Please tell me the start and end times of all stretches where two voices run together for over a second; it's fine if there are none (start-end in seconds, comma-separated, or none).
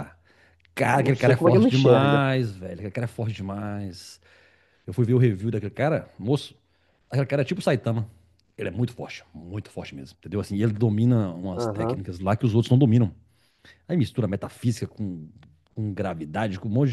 0.9-2.2